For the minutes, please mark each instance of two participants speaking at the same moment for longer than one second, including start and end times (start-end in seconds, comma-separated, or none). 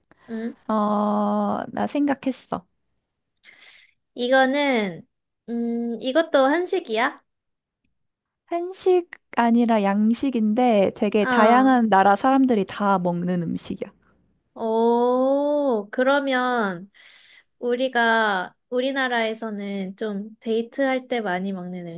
none